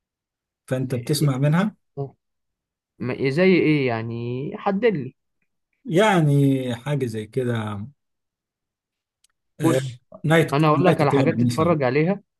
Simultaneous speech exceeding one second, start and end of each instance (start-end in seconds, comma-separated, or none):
10.5-11.8